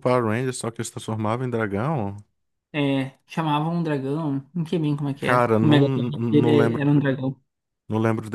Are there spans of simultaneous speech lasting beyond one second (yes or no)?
yes